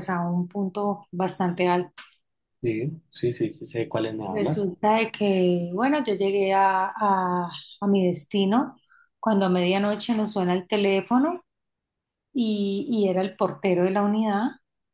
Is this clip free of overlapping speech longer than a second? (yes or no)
yes